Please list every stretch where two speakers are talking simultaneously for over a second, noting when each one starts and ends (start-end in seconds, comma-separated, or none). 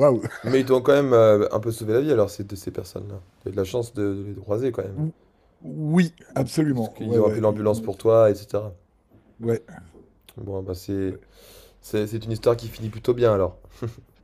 6.7-8.1